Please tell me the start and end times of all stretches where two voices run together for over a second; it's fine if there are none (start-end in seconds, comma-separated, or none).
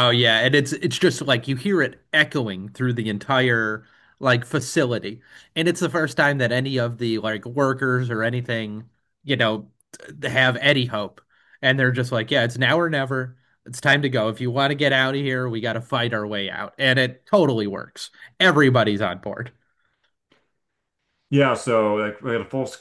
none